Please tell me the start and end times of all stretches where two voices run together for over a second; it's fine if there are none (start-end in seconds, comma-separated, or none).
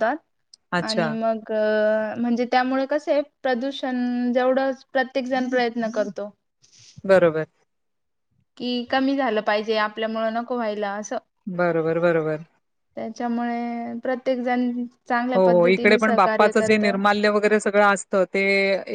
15.3-16.8